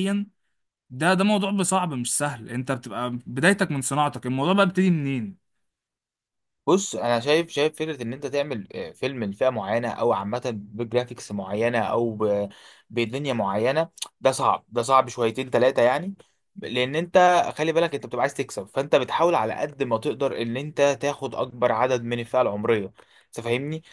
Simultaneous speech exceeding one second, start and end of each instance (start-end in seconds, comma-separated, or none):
none